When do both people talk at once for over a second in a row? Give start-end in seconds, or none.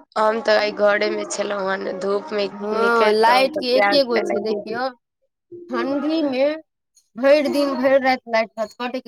2.8-4.8